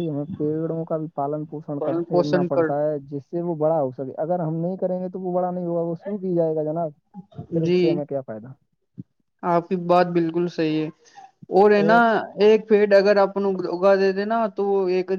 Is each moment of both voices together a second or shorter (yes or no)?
yes